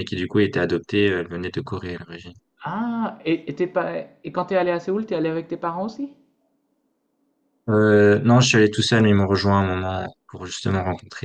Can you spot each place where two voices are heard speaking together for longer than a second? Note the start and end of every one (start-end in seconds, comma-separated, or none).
none